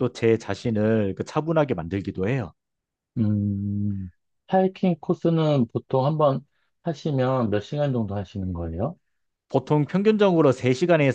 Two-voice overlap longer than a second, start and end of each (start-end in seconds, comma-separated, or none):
none